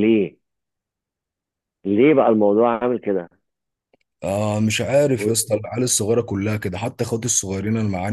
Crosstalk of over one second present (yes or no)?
no